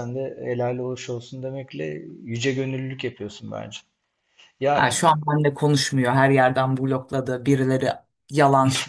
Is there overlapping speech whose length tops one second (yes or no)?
no